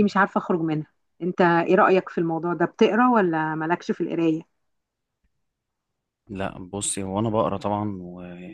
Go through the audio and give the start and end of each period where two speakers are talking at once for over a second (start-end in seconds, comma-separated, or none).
none